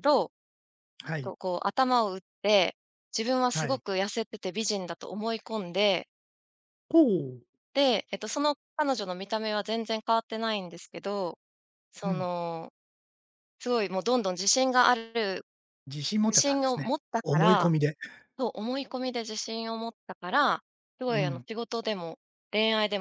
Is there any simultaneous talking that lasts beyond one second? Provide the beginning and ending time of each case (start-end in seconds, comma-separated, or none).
16.3-17.7